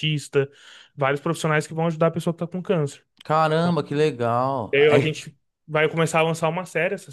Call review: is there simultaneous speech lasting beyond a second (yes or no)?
no